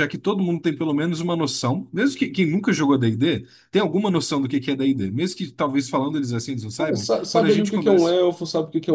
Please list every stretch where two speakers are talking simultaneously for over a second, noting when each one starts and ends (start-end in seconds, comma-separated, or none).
6.8-8.2